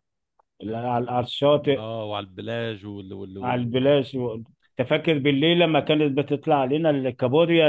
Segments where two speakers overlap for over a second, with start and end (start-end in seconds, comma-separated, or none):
none